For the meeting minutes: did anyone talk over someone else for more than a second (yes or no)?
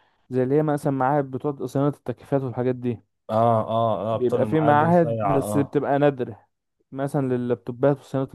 yes